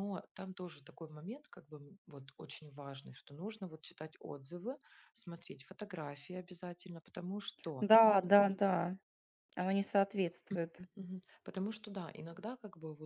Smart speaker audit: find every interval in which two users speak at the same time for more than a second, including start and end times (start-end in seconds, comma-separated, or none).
none